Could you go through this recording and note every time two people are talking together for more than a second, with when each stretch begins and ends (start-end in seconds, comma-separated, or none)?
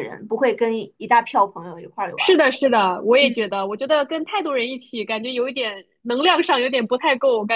none